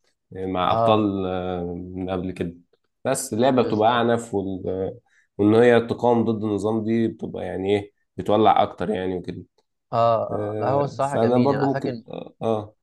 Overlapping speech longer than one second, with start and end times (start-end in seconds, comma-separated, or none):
10.3-12.0